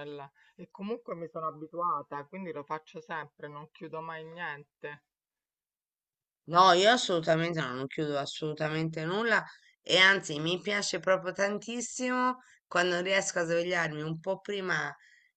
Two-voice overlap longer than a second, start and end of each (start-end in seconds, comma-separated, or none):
none